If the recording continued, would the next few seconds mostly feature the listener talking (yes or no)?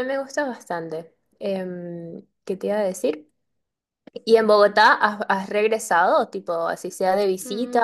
yes